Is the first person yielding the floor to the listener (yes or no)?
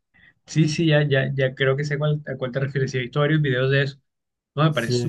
no